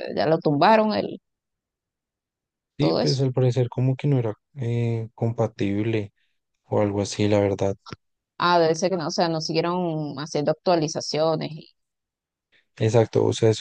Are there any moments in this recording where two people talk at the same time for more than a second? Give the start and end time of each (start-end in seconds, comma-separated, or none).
none